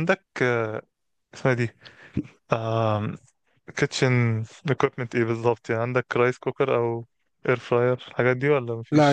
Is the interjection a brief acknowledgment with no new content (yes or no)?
no